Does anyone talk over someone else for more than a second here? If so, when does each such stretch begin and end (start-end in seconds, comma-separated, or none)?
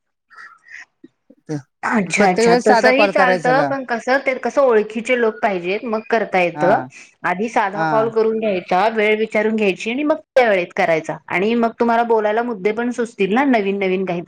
2.2-3.7